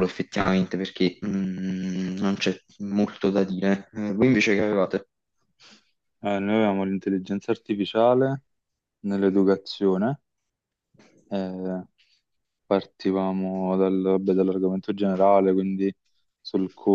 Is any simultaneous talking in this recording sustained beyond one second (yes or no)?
no